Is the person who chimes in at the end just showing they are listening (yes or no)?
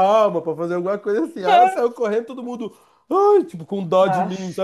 yes